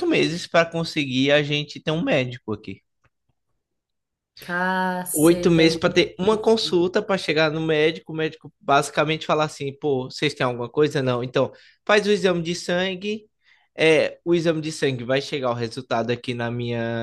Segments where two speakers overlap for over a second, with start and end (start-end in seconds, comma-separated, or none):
5.2-6.8